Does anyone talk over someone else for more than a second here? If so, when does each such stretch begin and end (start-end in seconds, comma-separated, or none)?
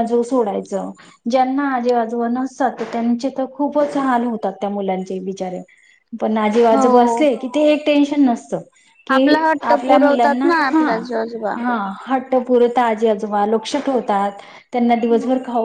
9.1-10.8